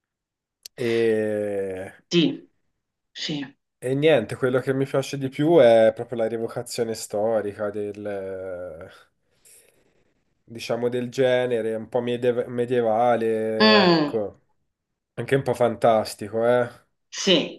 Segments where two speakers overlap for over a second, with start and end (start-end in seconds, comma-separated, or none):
none